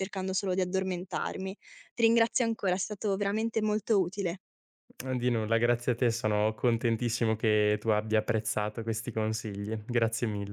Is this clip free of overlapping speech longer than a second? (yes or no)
yes